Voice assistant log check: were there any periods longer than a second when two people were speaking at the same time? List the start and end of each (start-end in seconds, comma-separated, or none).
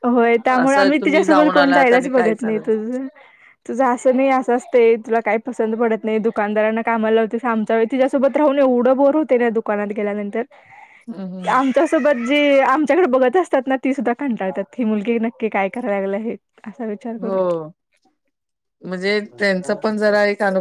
0.6-2.6